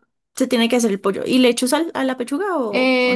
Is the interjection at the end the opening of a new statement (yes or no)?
yes